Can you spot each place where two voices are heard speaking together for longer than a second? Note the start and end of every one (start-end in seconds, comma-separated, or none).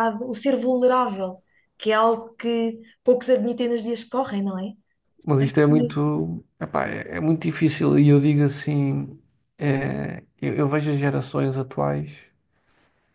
none